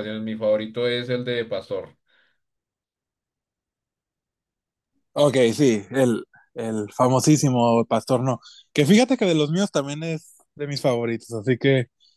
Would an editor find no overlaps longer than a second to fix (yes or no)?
yes